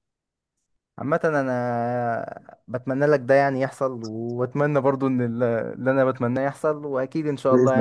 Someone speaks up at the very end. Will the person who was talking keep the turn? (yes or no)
no